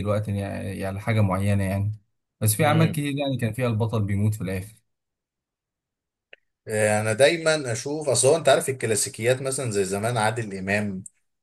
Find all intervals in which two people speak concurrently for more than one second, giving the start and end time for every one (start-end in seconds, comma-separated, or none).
none